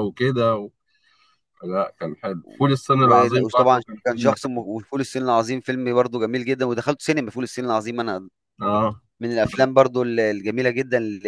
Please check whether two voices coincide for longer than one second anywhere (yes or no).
yes